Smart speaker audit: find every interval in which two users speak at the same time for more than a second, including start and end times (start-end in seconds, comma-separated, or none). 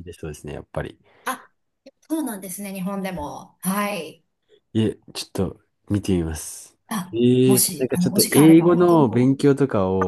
7.1-9.5